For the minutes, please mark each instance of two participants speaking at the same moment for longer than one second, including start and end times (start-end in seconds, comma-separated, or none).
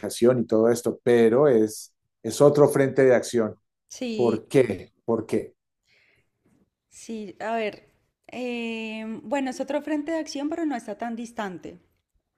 none